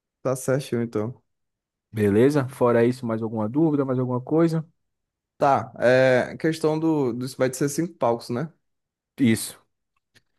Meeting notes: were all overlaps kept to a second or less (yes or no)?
yes